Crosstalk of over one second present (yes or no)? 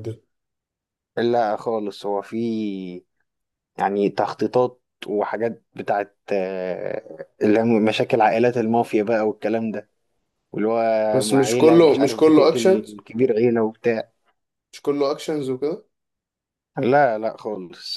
yes